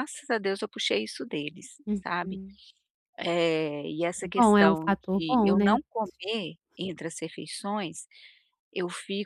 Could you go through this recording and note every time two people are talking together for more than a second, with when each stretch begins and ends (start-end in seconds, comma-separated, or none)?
4.2-6.5